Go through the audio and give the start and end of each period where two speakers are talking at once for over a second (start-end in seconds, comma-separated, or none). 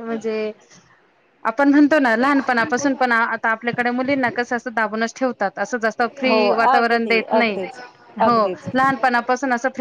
6.3-7.6